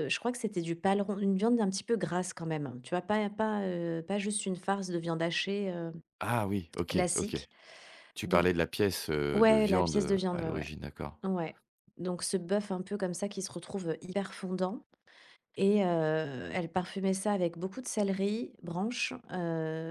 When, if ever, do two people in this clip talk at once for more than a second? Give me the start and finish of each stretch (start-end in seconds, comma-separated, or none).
9.3-10.7